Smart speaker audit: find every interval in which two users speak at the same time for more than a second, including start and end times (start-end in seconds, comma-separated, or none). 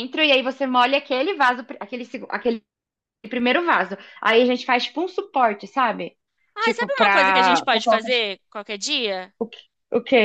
6.6-8.2